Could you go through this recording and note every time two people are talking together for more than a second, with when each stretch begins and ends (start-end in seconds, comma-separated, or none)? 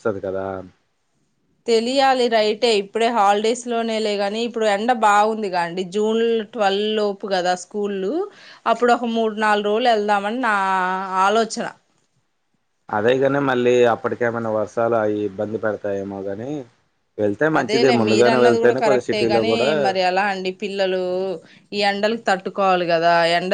17.6-19.7